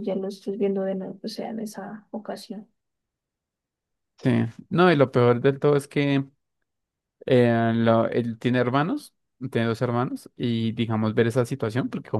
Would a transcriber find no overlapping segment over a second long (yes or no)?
yes